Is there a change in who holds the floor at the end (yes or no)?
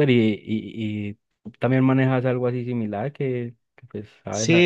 yes